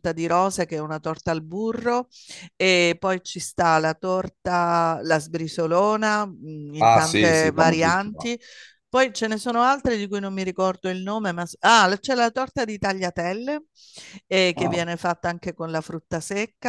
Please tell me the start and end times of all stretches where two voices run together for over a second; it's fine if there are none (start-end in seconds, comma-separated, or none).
6.8-8.3